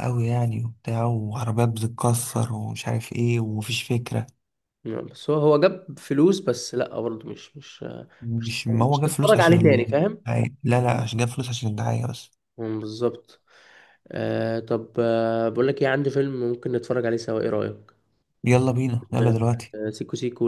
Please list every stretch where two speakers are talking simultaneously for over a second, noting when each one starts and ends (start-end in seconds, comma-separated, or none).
8.4-10.2